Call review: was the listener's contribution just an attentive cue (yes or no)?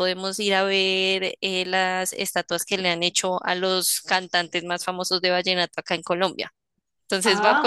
no